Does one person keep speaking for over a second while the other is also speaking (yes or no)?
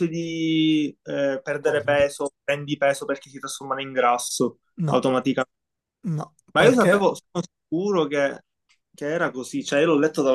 no